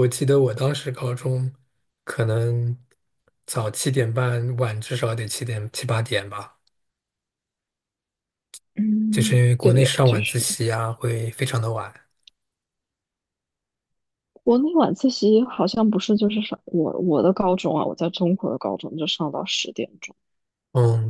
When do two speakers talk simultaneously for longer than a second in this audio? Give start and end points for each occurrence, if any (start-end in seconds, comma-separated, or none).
9.1-10.5